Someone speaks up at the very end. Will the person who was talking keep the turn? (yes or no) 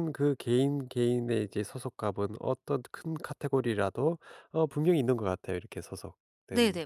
no